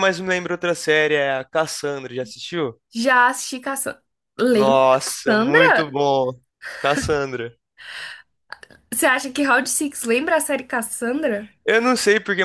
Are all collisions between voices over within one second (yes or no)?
no